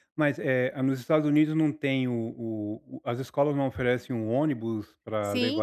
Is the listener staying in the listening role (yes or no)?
no